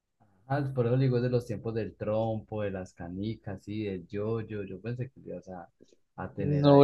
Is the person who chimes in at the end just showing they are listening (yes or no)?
no